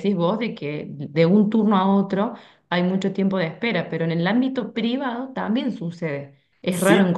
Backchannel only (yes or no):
yes